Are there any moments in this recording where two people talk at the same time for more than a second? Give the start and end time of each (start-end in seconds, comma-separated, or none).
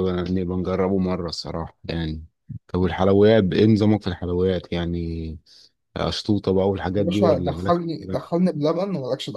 7.0-8.3